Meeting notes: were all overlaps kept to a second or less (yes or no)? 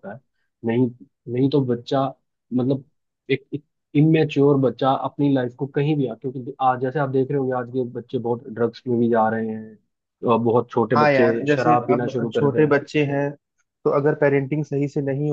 no